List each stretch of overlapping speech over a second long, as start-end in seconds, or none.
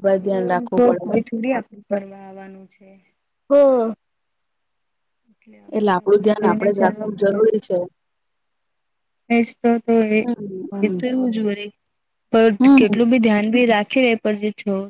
5.8-7.4